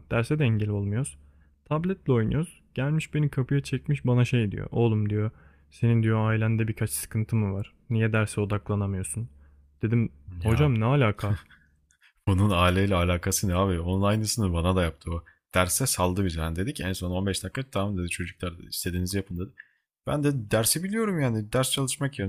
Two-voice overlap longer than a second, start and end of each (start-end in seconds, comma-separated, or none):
none